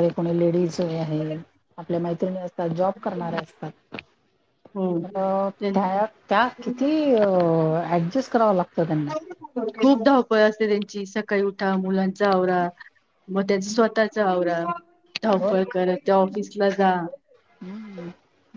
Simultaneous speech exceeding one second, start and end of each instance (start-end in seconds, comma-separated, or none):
none